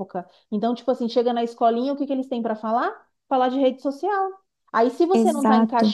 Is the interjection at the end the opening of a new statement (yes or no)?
no